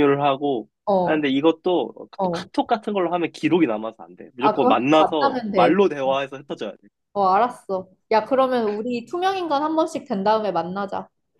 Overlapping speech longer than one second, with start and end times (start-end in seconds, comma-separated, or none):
4.4-6.2